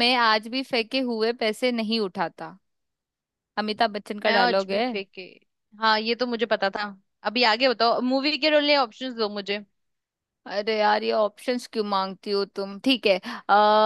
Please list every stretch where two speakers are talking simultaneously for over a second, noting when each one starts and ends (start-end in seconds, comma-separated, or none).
none